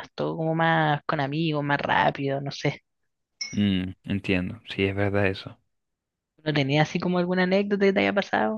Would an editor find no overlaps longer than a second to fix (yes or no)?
yes